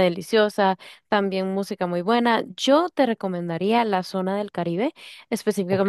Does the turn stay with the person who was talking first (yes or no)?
yes